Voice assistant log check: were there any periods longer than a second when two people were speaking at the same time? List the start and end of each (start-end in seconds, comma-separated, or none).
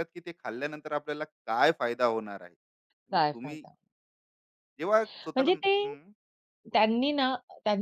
none